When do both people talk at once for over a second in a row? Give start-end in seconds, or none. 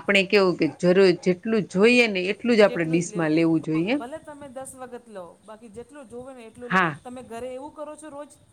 none